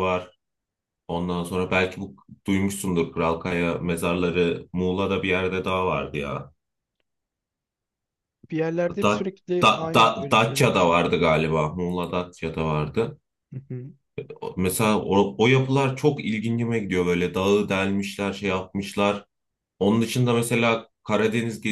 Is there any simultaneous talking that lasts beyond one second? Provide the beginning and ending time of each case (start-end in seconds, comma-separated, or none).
9.0-11.0